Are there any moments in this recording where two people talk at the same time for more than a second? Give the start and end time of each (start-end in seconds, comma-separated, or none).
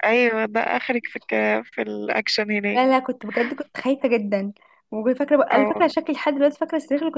none